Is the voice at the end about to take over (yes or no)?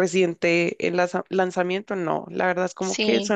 no